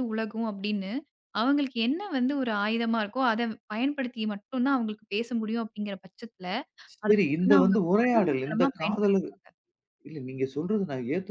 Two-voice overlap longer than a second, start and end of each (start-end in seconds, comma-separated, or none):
7.0-9.1